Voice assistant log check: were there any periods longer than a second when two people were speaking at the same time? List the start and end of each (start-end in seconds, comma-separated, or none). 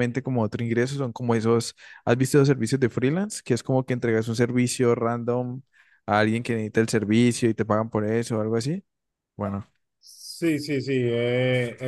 none